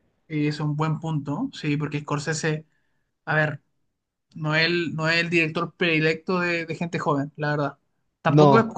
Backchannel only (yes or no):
yes